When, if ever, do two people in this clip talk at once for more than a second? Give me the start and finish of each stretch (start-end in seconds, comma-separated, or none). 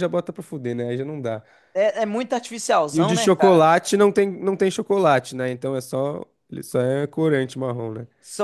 none